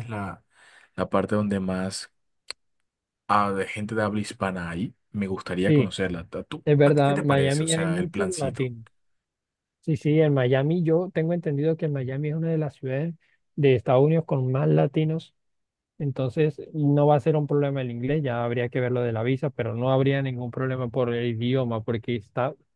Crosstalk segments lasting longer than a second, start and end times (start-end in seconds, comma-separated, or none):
6.7-8.7